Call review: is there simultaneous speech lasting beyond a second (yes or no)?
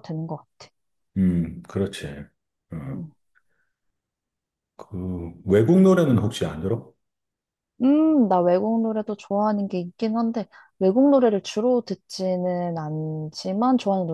no